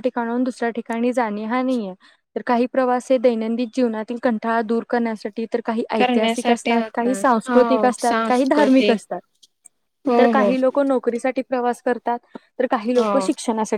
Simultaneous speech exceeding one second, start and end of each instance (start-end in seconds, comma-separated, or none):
6.0-9.0